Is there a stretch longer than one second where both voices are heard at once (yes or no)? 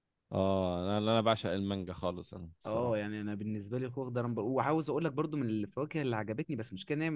no